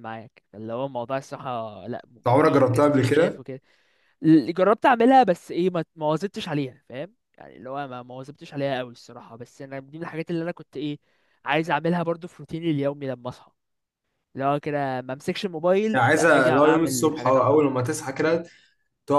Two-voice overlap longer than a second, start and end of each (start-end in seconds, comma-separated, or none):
2.2-3.4, 15.9-17.6